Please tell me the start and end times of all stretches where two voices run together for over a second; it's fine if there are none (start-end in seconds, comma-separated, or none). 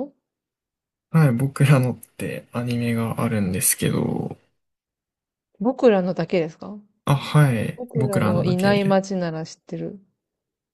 7.7-9.0